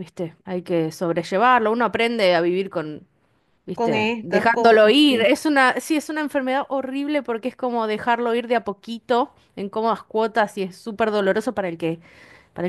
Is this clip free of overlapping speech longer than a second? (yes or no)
no